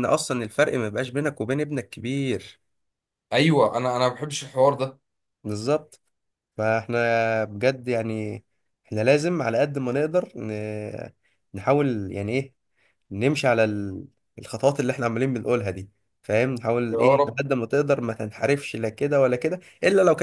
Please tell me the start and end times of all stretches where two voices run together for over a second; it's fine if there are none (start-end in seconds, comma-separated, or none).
none